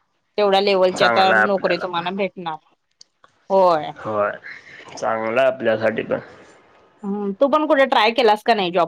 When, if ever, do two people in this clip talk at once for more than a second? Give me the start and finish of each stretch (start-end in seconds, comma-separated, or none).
0.8-2.0